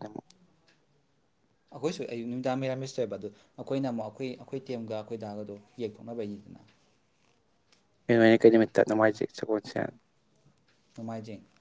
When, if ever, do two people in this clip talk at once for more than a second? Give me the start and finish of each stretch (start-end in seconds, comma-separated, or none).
none